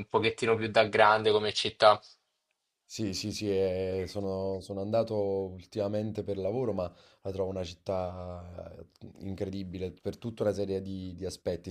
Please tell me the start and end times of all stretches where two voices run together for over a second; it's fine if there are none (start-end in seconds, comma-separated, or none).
none